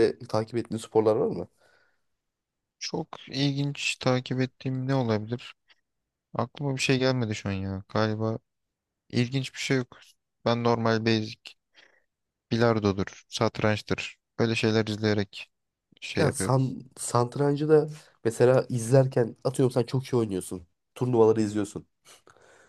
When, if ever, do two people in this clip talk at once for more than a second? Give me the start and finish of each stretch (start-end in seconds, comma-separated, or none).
none